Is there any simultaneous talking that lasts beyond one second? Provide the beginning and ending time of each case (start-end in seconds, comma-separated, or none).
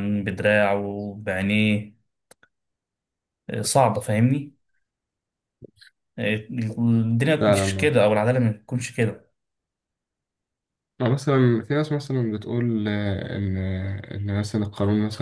none